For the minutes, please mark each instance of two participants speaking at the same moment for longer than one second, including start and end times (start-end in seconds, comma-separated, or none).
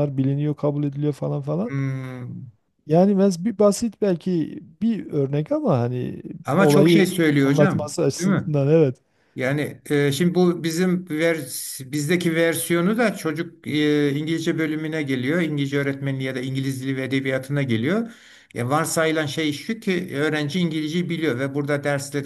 6.4-8.5